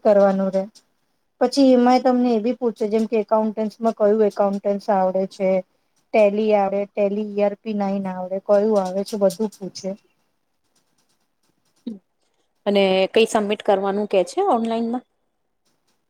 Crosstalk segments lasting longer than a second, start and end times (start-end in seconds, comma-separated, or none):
none